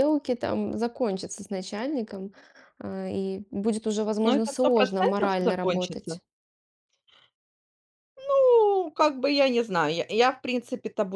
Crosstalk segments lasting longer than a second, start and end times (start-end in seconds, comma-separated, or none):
4.2-6.2